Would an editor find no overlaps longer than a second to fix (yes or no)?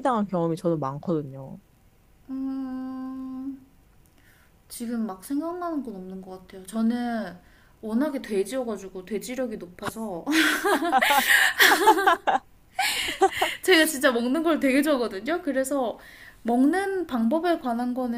yes